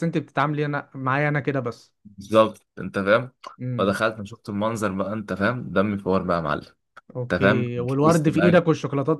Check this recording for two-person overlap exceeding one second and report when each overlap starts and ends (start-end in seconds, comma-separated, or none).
7.2-8.6